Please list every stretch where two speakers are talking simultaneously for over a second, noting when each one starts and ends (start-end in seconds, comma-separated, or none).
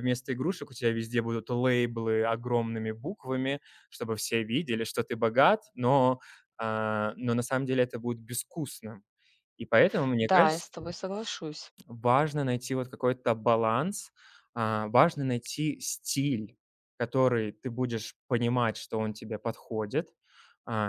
none